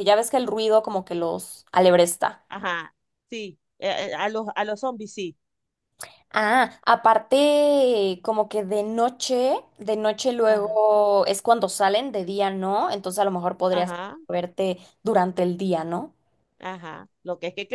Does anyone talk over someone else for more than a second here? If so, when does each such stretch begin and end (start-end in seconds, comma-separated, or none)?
none